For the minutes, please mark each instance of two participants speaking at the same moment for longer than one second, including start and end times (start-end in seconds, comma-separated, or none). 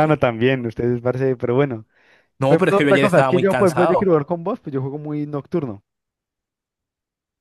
2.5-4.1